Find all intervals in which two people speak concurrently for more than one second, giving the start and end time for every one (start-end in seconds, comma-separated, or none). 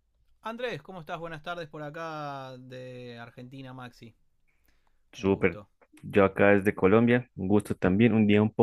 none